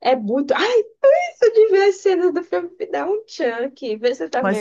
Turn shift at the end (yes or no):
yes